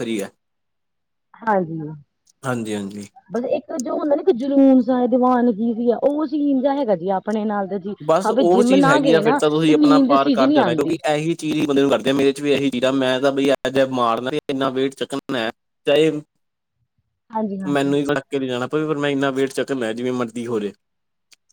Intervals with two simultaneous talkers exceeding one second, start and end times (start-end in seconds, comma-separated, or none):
8.3-11.0